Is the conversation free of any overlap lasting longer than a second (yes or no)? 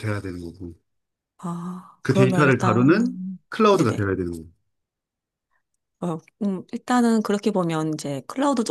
no